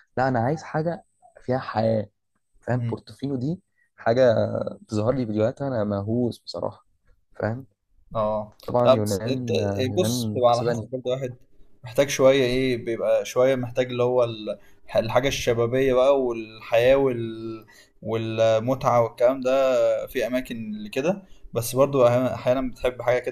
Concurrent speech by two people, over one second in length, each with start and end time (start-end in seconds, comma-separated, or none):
8.7-10.9